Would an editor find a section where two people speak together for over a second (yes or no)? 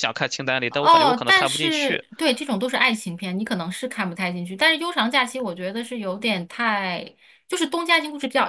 yes